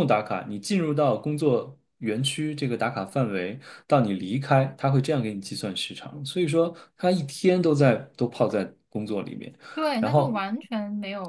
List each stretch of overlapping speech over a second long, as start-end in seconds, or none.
none